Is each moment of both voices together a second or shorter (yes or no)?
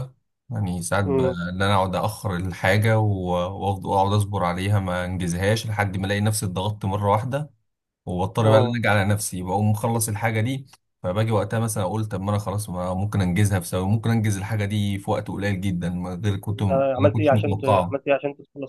no